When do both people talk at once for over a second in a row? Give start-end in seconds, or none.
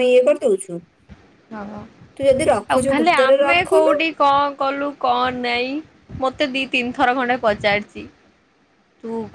2.1-3.9